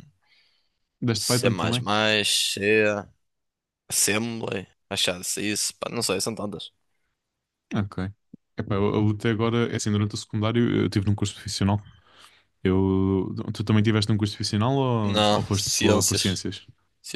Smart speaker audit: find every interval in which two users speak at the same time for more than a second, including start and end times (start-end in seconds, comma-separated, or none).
15.0-16.4